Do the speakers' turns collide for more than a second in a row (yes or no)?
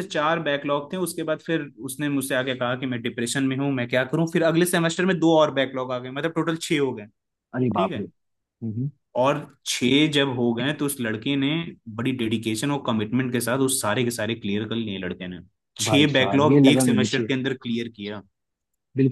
yes